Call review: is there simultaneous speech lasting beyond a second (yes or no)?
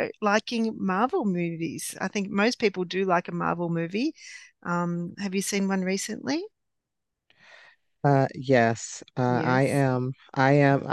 no